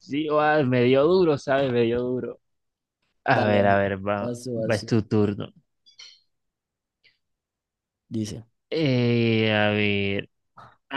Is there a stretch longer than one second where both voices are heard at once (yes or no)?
yes